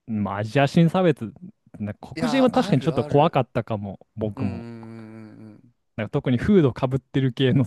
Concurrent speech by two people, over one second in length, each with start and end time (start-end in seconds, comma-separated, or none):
2.1-3.5